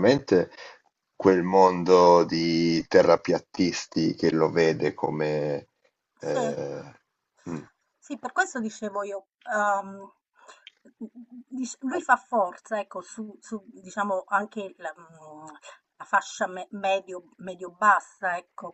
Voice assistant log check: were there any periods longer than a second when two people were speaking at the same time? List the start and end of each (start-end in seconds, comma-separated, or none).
none